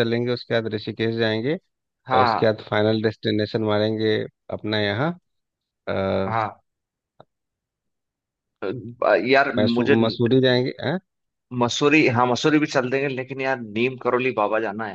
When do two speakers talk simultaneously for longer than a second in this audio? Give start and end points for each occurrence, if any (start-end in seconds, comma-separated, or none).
none